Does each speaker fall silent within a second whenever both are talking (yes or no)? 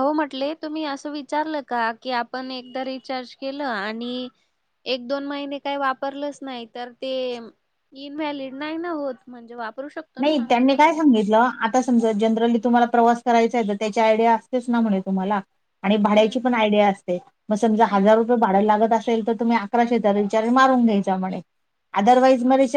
yes